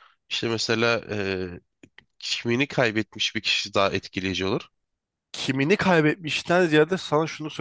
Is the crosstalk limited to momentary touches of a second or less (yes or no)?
yes